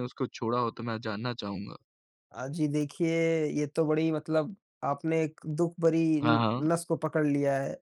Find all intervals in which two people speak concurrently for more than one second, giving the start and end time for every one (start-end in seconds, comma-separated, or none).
none